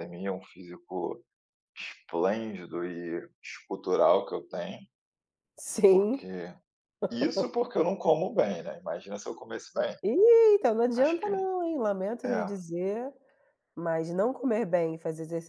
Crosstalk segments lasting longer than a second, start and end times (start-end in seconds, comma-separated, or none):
none